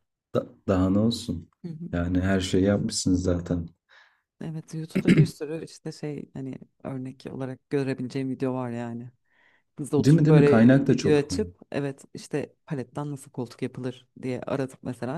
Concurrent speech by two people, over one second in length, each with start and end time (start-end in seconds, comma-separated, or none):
10.0-11.5